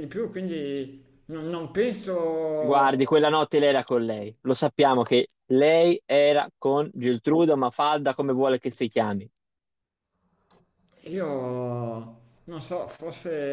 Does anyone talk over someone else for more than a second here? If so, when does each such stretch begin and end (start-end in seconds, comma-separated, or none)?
none